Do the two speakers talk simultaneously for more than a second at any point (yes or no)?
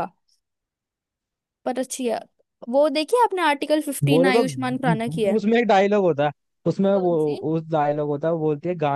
yes